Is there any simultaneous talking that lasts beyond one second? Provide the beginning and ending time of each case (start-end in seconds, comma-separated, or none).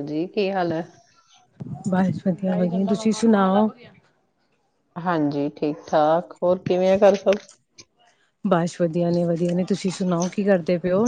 none